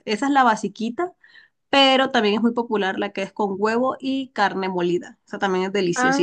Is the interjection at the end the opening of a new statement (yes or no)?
yes